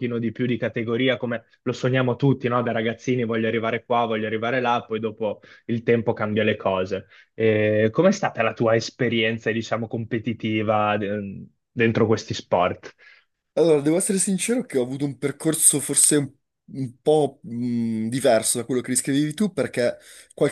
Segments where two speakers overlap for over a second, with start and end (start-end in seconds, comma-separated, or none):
none